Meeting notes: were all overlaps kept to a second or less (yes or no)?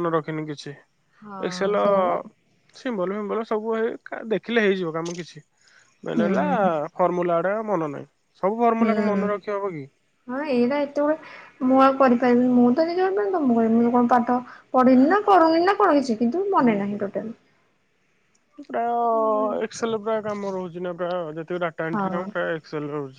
yes